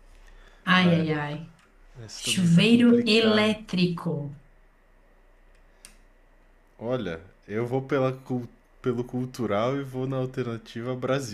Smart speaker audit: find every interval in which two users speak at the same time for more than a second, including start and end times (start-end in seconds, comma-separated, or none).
2.1-3.6